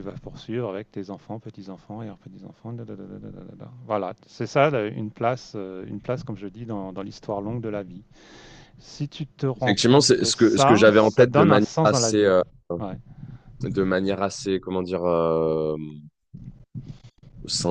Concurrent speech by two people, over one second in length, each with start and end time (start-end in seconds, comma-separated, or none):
9.6-12.3